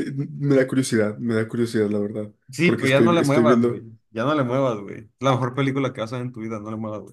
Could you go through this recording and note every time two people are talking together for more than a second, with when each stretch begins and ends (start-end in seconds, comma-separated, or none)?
2.5-3.9